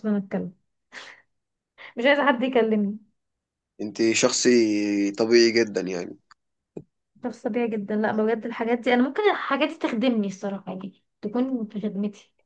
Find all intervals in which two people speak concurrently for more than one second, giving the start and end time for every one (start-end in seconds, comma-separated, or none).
none